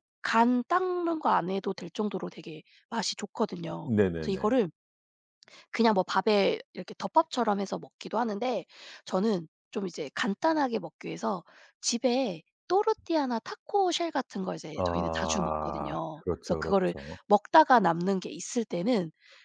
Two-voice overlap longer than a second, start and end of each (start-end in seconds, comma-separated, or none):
14.8-17.2